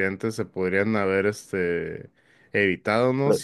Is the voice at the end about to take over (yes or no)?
no